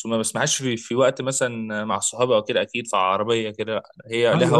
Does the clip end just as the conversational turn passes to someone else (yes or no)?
yes